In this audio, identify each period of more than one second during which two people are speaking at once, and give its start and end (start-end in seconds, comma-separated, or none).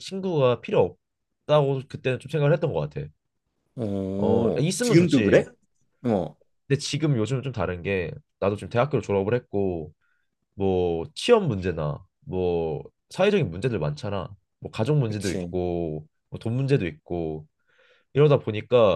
4.2-5.4